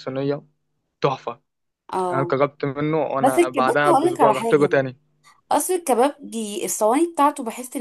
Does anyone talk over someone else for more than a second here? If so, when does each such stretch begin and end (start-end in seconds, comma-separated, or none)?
3.2-4.7